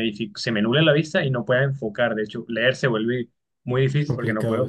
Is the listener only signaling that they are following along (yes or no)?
yes